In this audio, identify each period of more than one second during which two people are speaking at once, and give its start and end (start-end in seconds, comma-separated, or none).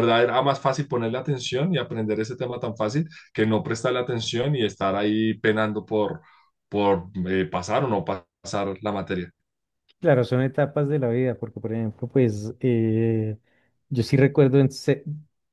none